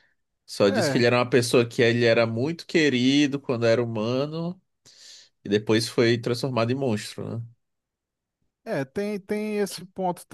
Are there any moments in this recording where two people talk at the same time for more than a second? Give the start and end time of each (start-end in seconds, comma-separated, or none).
none